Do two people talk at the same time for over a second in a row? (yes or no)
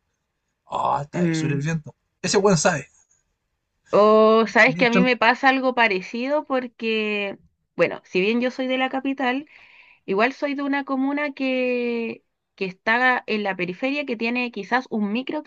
no